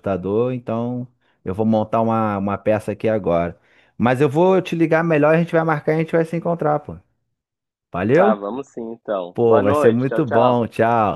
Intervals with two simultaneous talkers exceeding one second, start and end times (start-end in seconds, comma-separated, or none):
9.3-10.7